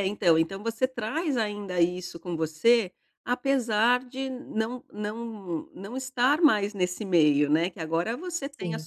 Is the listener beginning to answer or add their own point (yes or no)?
no